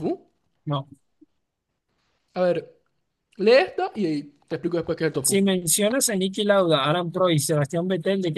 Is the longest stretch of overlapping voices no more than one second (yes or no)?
yes